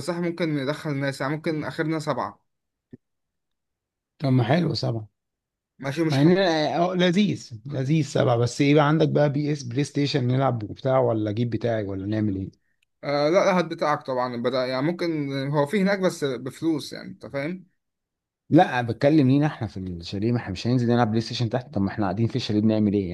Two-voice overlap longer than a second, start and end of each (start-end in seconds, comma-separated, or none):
none